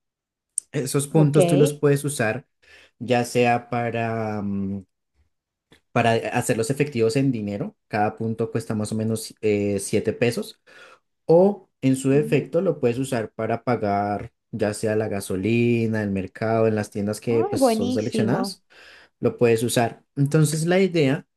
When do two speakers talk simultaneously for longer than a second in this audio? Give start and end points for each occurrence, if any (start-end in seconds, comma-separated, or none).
17.3-18.6